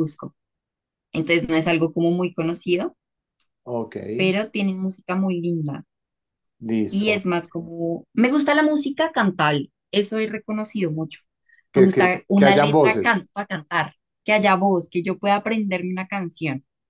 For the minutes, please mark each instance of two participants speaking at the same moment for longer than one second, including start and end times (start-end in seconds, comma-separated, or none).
11.7-13.3